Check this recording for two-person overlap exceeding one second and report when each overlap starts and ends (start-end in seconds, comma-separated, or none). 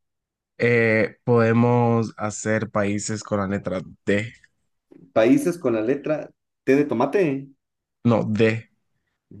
none